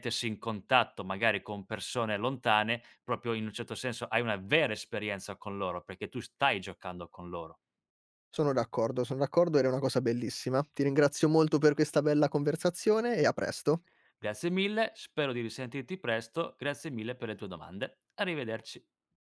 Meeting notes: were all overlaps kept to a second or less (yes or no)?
yes